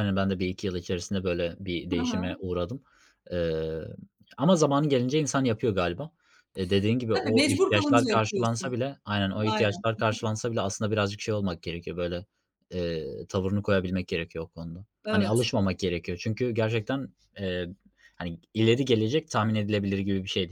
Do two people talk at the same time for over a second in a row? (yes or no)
yes